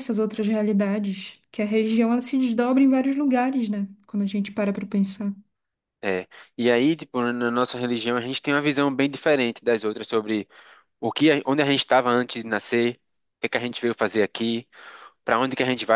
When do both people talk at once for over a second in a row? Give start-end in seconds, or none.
none